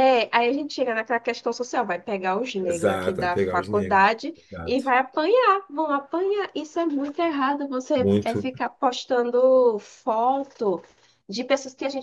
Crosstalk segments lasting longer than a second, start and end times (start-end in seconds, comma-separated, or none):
2.6-4.9